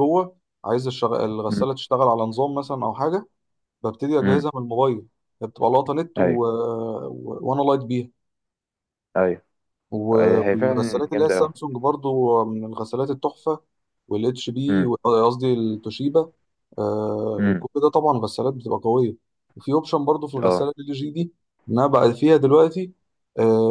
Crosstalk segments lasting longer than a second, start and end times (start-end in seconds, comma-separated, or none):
10.1-11.5